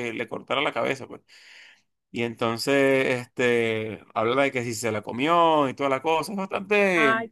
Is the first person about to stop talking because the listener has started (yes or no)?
yes